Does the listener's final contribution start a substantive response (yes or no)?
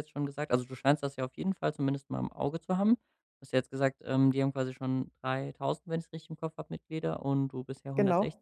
no